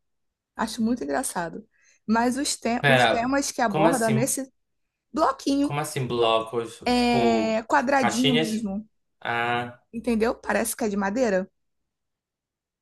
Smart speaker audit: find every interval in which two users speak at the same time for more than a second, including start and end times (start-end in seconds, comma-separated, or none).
2.8-4.3, 6.8-8.7